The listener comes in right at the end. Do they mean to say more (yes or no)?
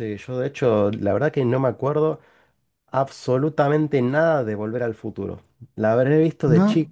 no